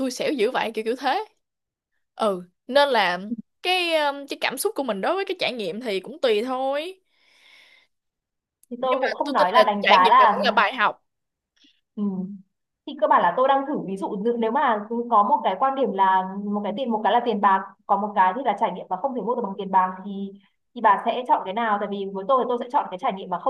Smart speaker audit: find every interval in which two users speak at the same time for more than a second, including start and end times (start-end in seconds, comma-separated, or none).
8.8-10.4